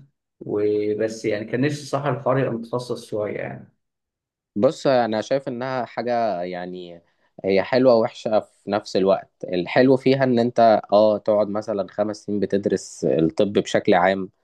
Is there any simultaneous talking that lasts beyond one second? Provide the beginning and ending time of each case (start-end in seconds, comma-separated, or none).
none